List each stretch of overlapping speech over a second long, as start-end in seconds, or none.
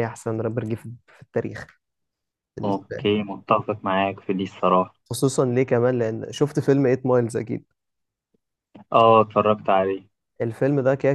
none